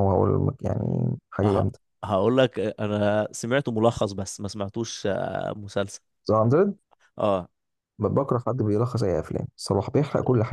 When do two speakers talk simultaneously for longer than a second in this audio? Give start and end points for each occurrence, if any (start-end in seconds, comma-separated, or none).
none